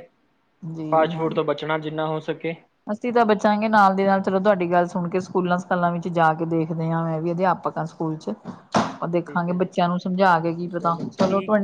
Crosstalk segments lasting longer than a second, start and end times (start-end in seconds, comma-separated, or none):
none